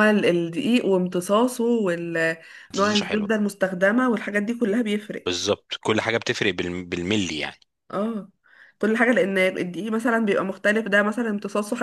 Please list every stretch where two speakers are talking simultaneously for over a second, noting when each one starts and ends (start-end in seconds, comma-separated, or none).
none